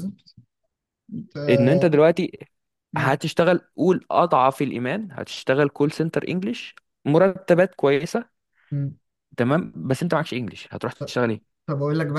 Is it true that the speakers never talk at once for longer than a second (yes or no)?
yes